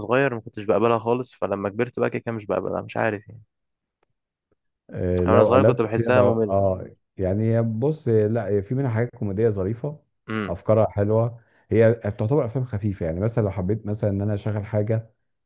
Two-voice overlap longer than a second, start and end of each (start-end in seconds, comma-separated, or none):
5.3-6.7